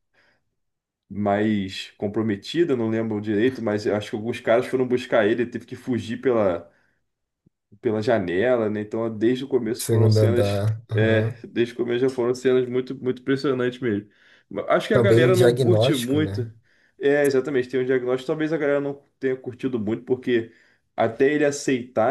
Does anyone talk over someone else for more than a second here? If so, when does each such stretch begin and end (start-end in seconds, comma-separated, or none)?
9.8-11.5, 14.9-16.5